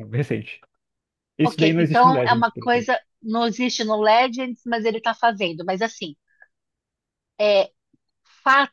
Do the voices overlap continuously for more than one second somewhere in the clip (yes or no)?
yes